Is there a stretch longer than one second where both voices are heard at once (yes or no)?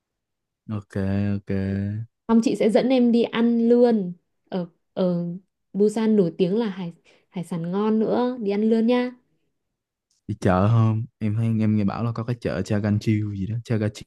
no